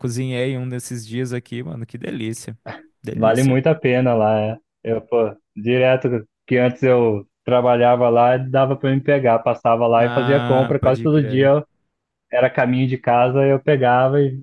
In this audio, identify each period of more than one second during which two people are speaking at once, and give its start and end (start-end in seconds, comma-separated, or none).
10.0-11.5